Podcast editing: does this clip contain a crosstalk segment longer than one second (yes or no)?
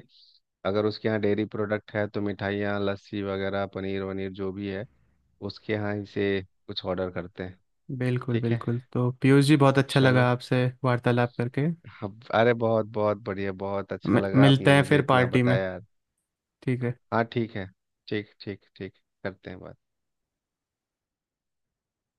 yes